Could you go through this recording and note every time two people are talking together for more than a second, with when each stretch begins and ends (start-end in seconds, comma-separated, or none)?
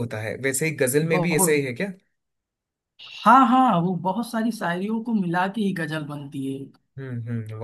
none